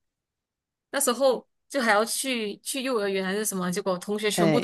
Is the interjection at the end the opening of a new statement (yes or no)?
no